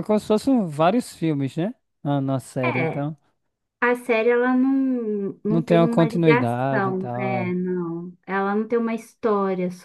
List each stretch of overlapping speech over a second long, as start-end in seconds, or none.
5.5-7.5